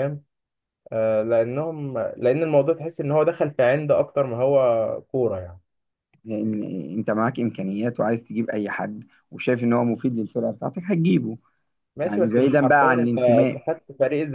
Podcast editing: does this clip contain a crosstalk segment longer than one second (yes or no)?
yes